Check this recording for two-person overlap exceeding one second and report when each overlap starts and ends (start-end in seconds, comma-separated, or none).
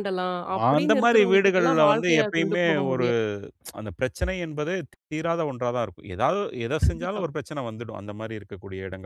0.8-3.1